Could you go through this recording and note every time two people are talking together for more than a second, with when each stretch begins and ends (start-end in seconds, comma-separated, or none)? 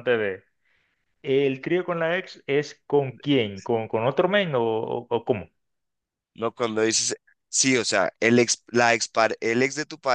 none